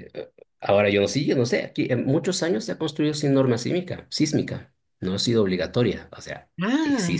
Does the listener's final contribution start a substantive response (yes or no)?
no